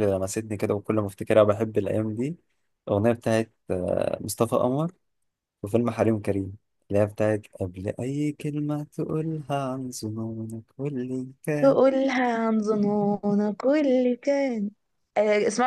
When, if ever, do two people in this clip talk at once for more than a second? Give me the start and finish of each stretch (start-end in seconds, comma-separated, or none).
none